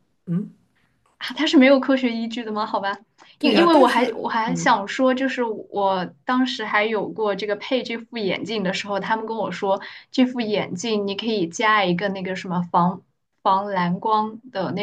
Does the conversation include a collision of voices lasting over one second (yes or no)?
yes